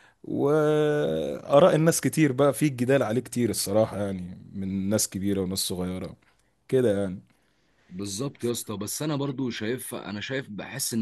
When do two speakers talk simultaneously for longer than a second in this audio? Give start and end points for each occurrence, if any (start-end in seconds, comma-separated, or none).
none